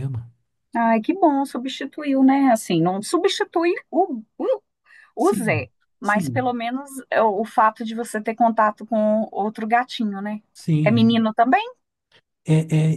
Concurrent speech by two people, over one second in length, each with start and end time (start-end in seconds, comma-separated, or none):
5.2-6.5